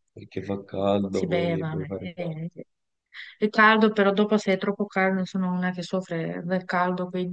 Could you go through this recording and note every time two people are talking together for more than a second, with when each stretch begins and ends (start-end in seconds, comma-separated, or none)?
1.1-2.4